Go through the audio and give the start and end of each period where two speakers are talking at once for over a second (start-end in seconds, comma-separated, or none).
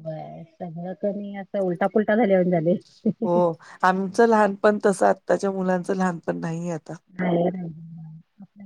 none